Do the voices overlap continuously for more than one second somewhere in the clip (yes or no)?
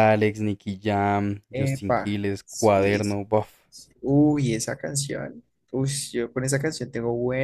yes